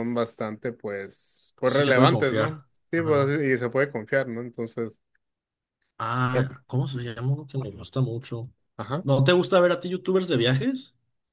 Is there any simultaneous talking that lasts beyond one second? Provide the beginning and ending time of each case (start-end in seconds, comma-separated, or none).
1.7-3.4